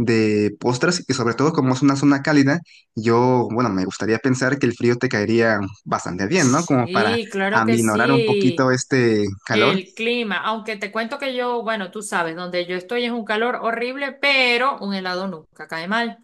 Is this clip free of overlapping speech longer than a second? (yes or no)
no